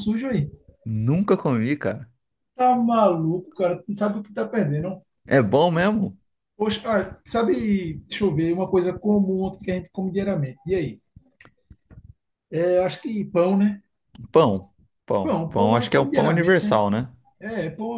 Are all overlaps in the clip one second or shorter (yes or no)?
no